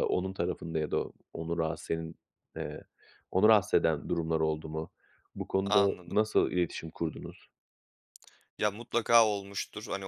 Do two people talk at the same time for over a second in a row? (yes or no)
no